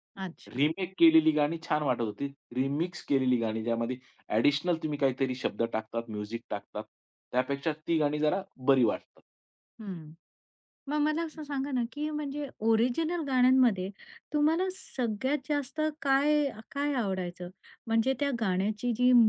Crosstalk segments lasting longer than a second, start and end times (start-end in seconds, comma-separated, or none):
none